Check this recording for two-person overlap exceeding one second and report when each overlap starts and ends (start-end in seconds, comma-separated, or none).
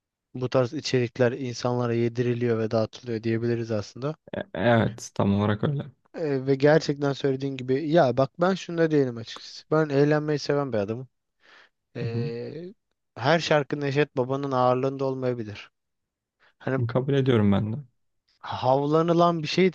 none